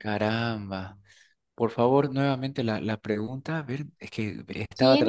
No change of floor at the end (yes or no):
no